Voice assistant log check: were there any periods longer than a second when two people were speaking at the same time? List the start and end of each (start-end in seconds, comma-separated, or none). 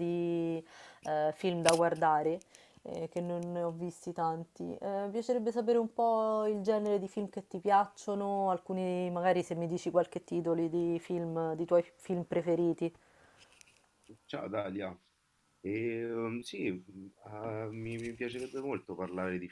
none